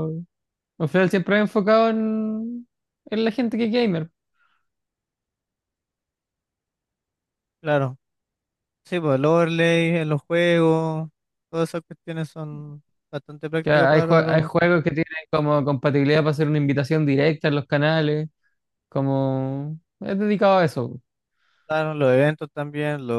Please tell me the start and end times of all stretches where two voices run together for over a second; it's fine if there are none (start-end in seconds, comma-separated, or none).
13.6-14.8